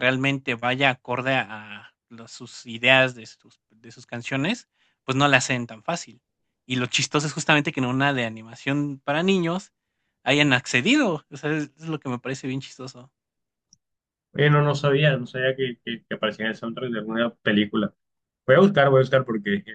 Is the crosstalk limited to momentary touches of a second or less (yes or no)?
yes